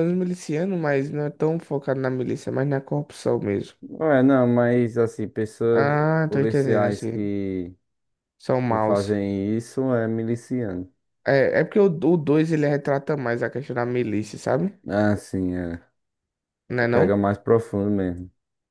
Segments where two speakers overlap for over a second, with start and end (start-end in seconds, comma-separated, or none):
5.7-7.3